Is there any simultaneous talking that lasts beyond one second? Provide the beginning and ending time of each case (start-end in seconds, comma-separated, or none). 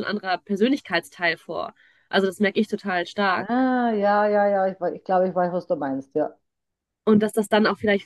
none